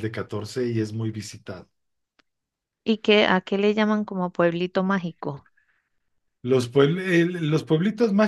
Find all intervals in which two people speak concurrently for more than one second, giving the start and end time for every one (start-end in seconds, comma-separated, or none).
none